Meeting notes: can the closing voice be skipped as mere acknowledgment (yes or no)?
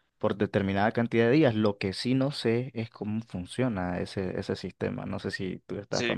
no